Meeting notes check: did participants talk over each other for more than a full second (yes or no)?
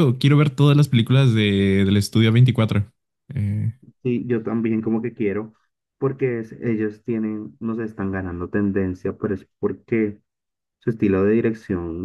no